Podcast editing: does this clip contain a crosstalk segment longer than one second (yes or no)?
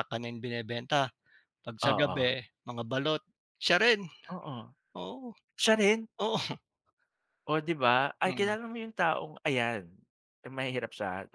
no